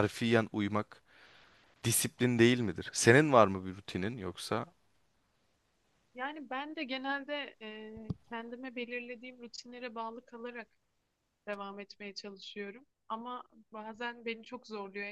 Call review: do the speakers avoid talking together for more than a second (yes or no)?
yes